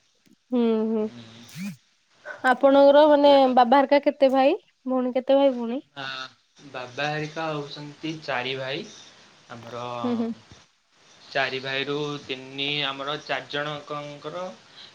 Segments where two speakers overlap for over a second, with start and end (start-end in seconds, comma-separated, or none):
none